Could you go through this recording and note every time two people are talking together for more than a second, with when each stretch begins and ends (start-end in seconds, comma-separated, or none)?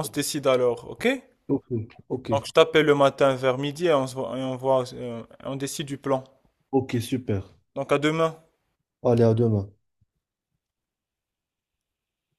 none